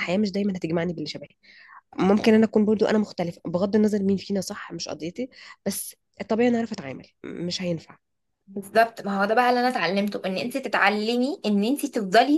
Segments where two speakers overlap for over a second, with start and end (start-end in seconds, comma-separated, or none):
none